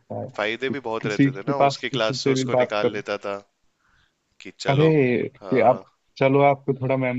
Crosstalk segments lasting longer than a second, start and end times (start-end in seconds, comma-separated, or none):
0.7-3.0